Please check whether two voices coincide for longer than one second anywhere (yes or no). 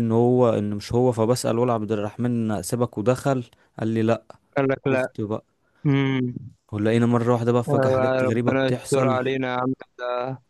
yes